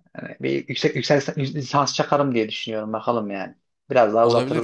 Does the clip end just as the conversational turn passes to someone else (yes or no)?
yes